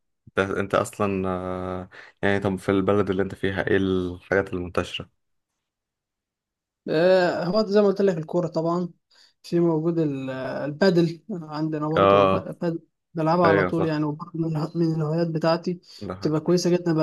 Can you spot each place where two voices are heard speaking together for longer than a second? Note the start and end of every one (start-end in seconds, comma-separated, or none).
none